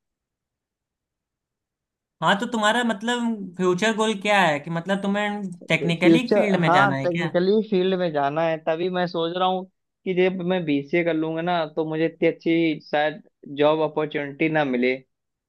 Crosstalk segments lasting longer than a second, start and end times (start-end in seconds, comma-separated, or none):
5.6-7.3